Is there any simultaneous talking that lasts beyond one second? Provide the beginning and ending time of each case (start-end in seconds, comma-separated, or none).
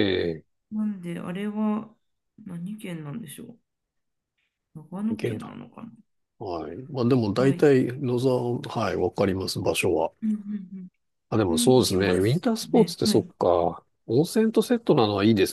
11.5-13.3